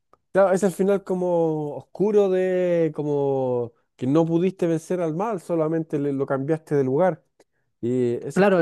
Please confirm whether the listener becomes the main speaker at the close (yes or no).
yes